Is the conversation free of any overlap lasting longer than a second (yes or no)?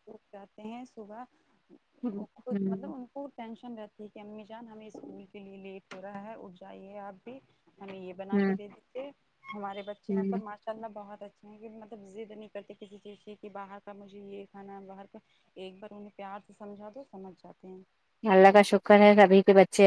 yes